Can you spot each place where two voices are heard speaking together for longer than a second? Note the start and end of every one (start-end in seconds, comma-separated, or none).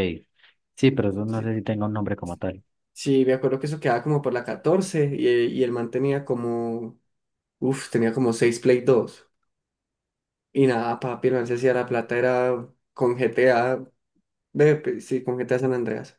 none